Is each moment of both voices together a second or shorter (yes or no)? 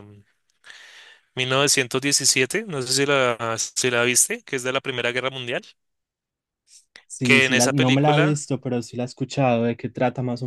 no